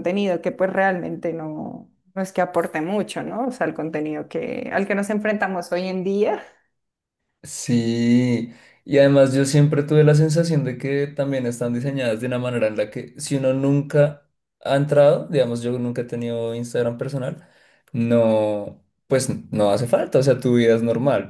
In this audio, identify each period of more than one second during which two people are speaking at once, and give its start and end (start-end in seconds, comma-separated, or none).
none